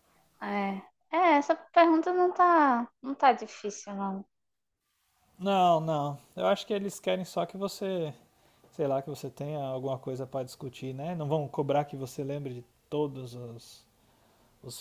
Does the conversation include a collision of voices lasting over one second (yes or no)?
no